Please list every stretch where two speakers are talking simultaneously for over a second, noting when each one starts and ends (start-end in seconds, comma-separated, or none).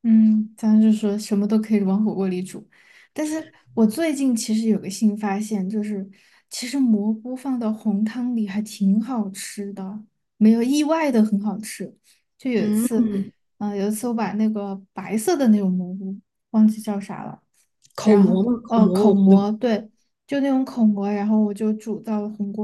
18.0-19.4